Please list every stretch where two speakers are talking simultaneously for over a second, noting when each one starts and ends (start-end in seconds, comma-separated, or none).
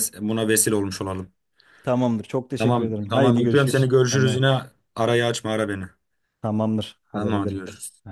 2.6-4.5